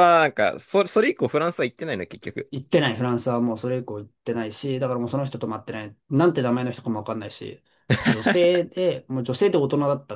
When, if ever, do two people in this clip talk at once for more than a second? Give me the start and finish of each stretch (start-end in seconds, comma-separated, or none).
none